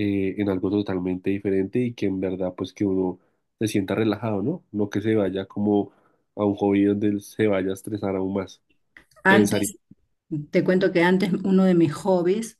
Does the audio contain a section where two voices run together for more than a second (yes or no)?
no